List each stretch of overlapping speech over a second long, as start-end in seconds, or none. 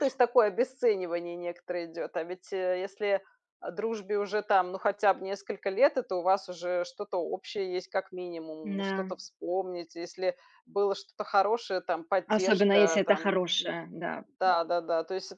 12.3-13.7